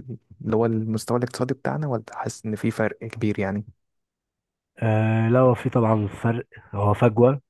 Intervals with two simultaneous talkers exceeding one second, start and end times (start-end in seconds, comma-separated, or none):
none